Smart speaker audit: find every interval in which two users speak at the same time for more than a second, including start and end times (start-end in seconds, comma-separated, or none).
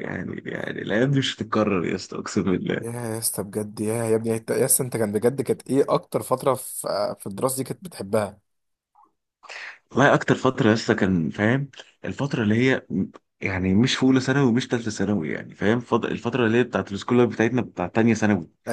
none